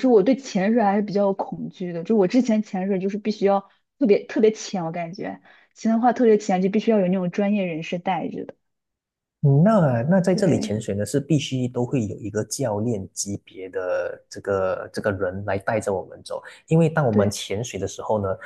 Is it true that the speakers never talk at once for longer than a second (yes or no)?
yes